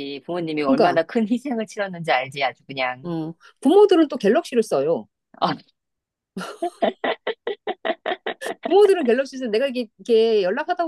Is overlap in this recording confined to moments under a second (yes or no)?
yes